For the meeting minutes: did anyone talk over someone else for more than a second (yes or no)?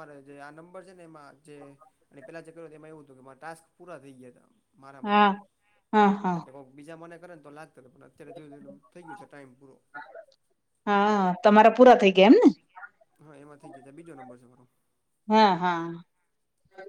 no